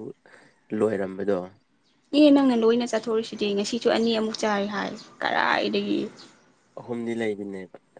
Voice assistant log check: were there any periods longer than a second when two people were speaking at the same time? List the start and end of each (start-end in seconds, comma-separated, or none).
none